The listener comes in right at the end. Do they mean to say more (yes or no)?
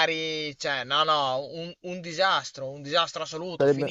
no